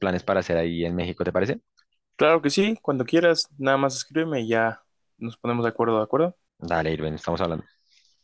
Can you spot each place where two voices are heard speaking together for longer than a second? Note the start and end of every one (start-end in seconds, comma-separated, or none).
none